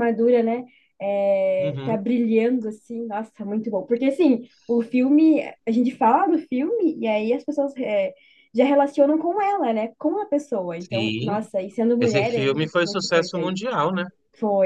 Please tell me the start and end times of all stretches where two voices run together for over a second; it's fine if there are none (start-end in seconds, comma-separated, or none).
12.0-13.7